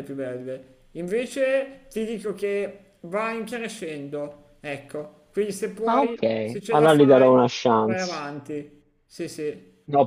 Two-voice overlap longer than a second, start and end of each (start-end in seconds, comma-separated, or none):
5.8-8.2